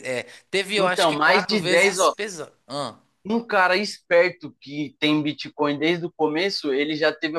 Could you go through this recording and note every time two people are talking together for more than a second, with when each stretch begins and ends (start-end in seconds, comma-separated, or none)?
0.8-2.1